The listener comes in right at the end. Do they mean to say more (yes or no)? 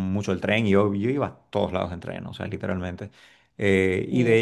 no